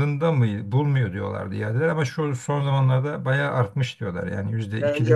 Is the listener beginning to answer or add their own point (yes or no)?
yes